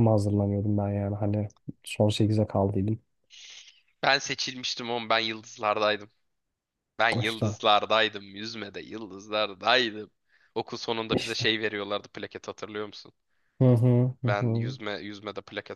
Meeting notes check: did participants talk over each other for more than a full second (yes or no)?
no